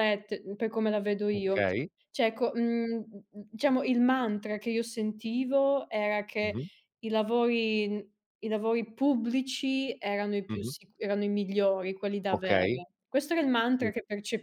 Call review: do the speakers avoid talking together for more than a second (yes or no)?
yes